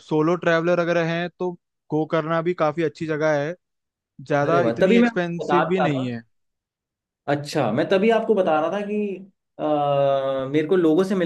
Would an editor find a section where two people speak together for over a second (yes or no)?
yes